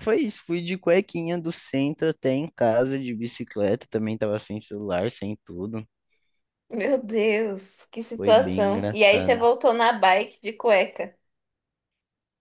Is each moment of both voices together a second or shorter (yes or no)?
no